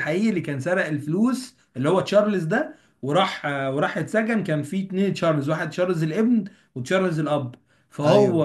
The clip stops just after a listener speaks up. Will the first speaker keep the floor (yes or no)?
yes